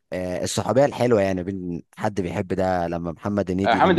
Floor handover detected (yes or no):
yes